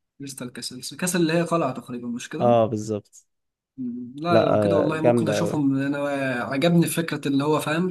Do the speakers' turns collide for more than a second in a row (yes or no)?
yes